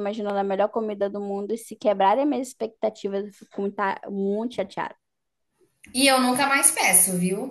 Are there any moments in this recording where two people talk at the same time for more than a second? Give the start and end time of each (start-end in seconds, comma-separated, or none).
none